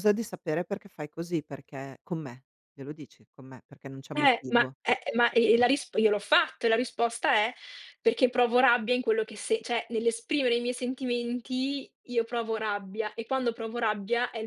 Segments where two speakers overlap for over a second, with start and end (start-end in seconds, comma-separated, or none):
none